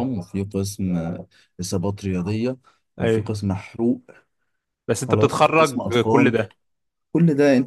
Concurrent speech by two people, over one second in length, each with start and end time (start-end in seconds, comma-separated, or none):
5.1-6.5